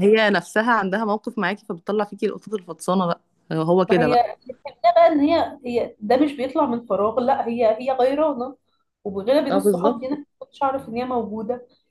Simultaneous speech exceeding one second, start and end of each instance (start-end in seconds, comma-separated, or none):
none